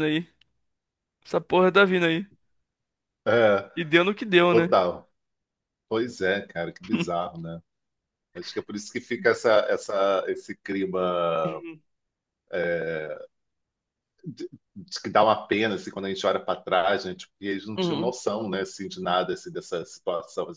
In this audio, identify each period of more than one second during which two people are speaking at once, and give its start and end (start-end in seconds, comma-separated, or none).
none